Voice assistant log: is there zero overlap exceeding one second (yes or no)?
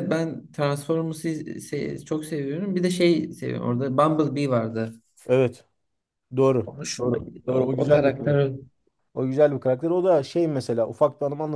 no